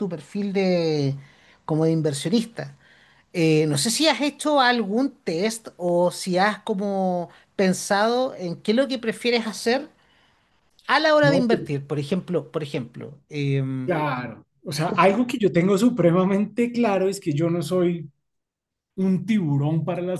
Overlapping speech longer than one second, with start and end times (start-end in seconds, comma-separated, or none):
none